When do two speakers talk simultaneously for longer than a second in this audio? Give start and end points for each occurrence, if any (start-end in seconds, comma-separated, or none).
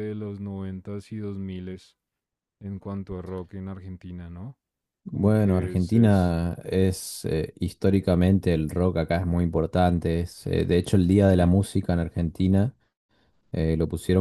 5.1-6.4